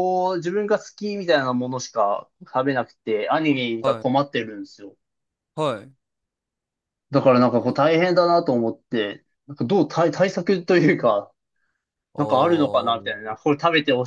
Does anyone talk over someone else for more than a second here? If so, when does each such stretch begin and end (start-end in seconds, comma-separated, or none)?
12.2-13.4